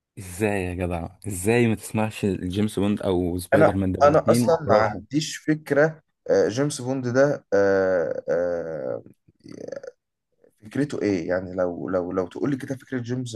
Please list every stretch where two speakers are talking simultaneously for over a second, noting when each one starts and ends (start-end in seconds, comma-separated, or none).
3.5-5.0